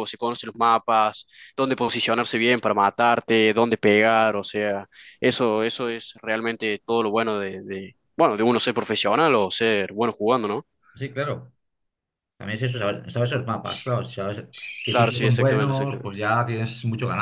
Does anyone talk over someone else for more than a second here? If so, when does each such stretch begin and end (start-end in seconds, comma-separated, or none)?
14.9-16.2